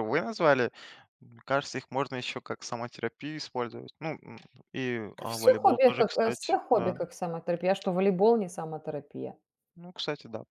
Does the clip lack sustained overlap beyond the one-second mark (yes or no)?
no